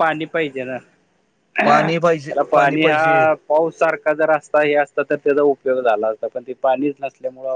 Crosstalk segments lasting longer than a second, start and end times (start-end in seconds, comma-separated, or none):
none